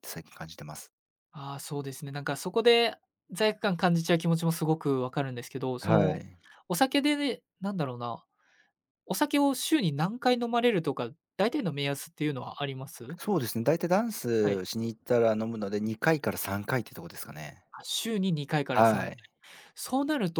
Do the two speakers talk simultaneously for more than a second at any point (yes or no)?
no